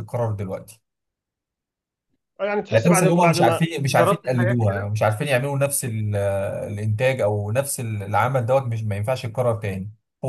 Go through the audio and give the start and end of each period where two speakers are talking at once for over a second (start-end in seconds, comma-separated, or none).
2.7-4.9